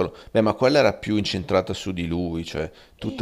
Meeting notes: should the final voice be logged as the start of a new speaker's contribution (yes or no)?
yes